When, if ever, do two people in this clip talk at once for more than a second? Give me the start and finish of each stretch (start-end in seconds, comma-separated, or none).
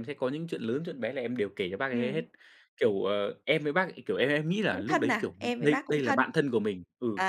4.7-6.2